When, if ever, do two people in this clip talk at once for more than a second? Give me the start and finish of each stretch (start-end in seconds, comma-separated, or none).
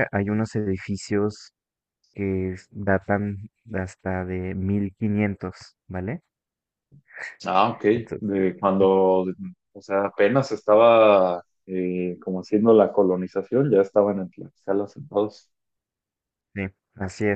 none